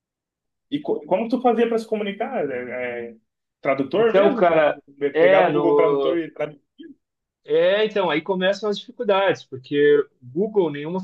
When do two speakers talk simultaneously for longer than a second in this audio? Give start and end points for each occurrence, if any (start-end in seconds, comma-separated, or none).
4.0-6.2